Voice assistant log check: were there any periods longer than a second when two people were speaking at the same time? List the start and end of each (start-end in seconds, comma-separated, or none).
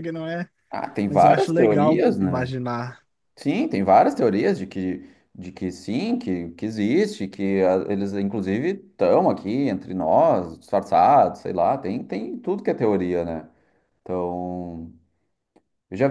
1.1-2.5